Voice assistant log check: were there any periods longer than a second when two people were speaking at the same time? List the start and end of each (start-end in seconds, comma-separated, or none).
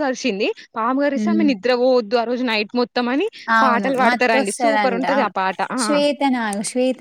3.6-5.3